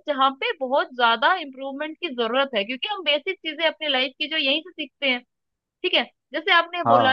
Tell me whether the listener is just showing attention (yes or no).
yes